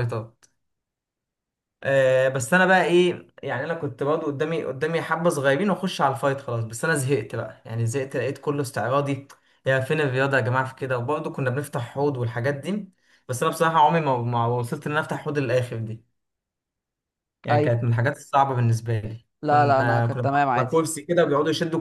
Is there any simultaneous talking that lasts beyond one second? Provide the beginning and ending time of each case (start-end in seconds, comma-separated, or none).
19.4-20.8